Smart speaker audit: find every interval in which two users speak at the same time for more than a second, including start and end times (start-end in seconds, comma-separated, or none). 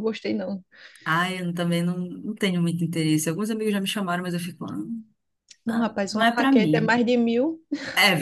5.7-7.0